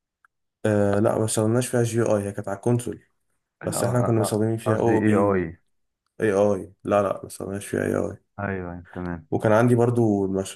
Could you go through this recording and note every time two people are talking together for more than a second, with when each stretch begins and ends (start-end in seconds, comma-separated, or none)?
3.6-5.5